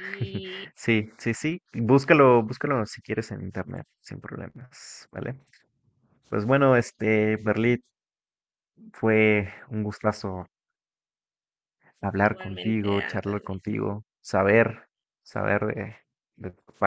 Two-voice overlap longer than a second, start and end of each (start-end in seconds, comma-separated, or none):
12.2-13.5